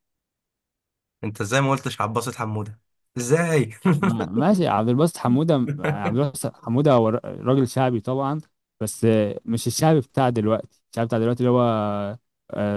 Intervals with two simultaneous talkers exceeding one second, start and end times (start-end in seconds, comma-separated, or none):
none